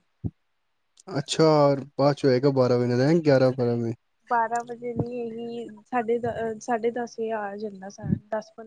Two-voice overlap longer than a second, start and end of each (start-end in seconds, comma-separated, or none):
none